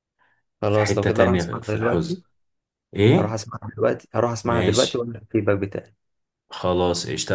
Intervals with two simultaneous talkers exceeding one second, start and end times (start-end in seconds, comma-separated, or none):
0.7-2.2